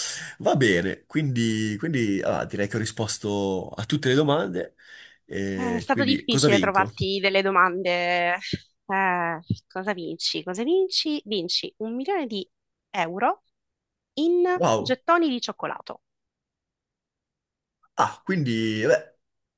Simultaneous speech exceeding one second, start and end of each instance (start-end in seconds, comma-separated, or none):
5.5-6.9